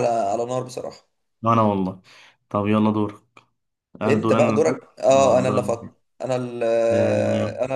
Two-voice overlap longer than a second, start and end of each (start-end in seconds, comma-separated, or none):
4.1-5.7